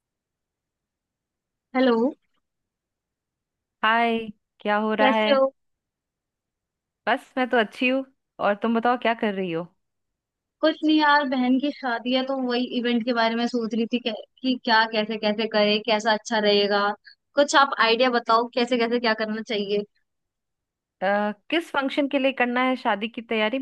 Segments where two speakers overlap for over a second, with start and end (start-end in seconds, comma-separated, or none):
none